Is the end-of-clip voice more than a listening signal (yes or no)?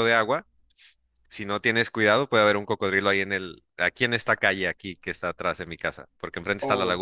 yes